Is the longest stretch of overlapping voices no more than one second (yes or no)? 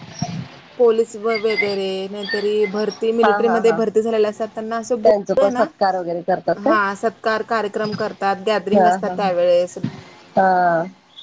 yes